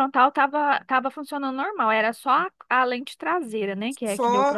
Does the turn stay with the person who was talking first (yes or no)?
no